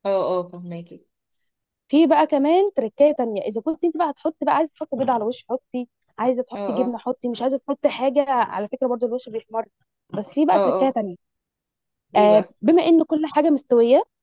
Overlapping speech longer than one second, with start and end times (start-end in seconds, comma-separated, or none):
none